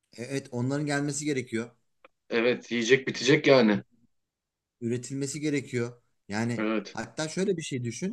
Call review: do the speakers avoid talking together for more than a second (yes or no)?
yes